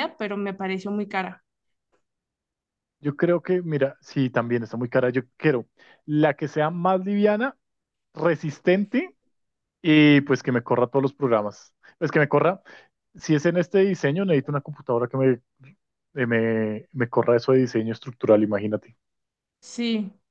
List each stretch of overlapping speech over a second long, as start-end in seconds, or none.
none